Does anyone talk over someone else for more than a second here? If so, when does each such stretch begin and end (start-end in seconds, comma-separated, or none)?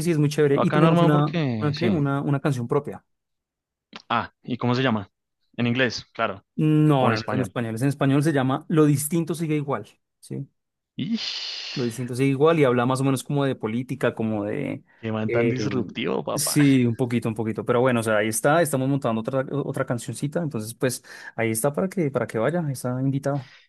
0.5-2.0